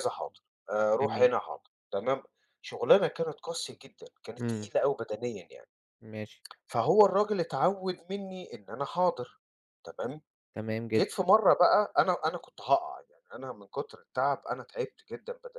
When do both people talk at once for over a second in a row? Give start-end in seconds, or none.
none